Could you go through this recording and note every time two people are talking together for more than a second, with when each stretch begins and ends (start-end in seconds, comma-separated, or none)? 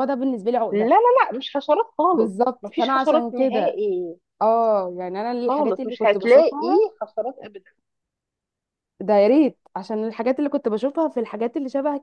2.1-3.8, 5.5-6.8